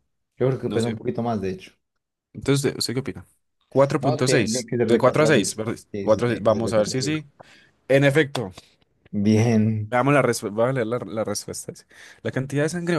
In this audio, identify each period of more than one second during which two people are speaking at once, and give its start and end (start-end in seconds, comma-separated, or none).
4.0-7.1